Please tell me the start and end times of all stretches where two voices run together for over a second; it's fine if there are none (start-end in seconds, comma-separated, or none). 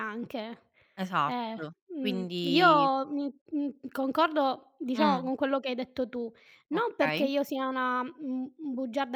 1.2-2.9